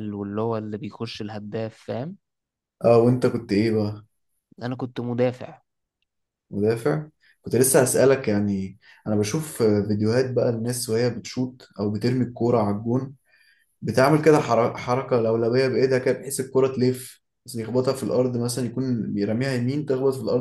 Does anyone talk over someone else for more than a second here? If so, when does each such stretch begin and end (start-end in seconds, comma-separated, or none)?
none